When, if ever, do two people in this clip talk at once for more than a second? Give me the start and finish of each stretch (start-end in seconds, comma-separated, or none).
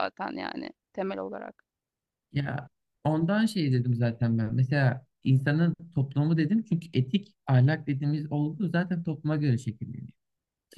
none